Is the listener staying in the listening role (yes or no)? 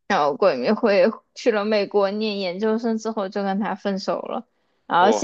yes